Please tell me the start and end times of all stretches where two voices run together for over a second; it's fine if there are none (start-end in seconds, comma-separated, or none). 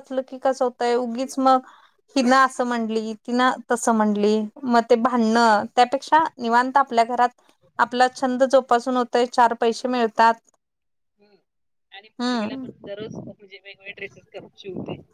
none